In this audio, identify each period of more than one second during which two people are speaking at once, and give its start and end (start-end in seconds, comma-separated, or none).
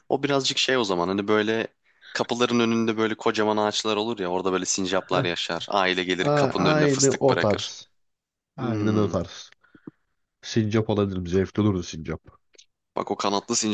6.2-7.8